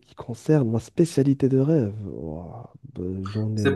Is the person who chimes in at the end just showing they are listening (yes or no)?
no